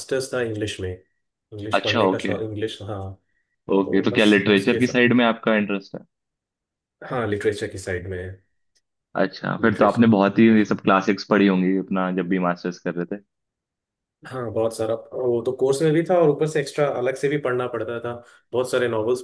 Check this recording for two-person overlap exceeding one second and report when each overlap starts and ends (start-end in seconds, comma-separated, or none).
3.8-5.1